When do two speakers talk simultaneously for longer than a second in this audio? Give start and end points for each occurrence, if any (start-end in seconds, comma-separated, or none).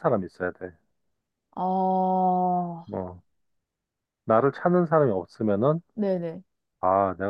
none